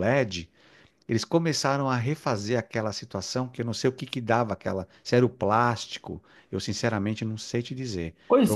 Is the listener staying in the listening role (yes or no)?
no